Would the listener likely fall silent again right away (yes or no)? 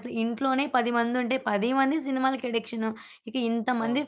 yes